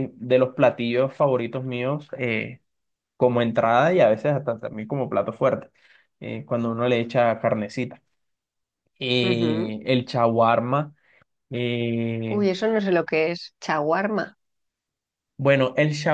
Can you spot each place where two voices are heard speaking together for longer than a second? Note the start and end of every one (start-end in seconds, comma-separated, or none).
none